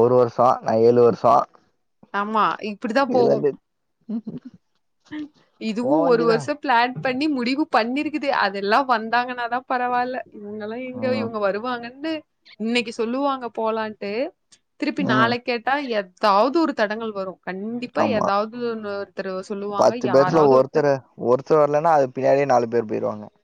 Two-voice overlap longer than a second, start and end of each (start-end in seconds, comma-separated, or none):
none